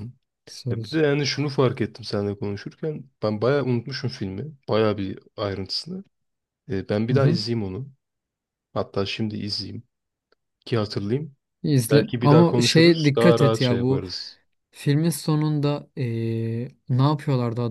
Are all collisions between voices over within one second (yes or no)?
no